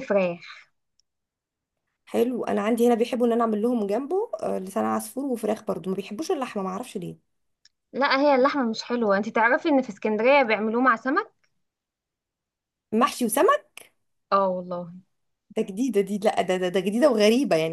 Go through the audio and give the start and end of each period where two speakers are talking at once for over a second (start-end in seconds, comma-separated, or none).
none